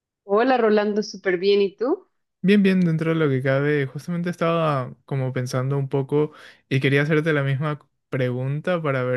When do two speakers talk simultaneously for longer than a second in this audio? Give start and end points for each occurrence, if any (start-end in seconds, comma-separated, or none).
none